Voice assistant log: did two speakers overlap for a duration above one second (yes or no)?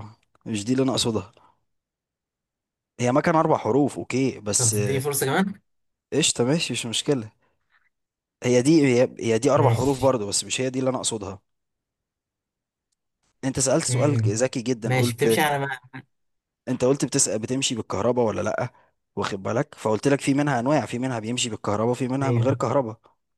yes